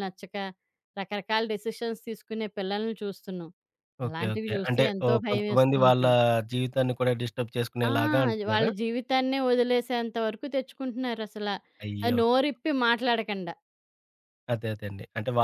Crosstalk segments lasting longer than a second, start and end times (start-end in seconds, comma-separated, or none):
4.1-6.0